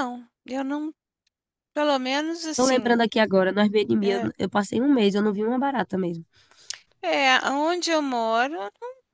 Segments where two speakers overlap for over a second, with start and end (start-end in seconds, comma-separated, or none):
none